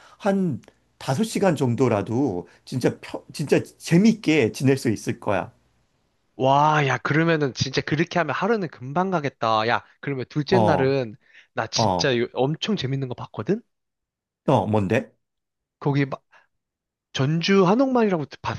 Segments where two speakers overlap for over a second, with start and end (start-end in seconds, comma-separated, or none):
none